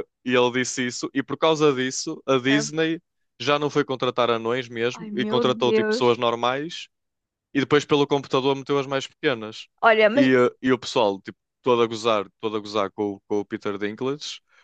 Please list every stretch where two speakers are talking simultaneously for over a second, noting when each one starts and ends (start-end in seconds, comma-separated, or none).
4.9-6.2